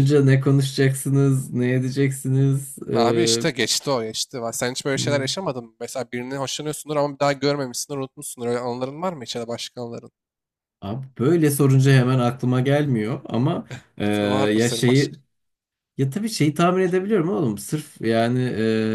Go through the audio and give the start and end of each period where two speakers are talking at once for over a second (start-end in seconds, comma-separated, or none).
none